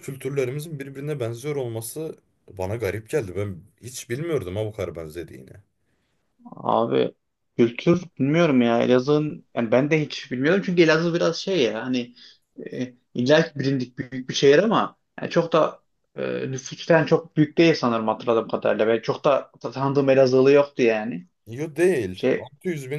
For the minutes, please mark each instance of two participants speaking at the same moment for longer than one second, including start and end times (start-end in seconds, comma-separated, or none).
none